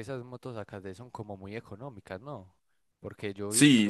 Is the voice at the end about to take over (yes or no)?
yes